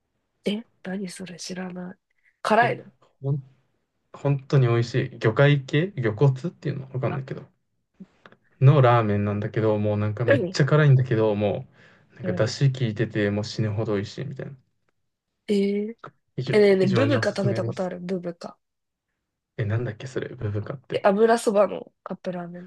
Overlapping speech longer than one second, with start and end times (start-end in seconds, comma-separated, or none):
16.5-17.9